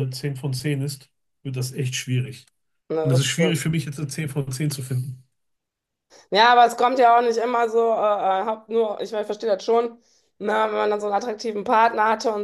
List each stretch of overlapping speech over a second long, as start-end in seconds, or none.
none